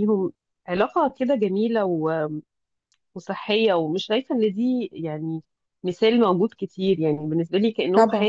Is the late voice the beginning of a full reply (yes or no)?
no